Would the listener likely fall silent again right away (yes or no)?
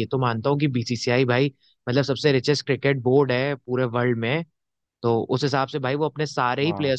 yes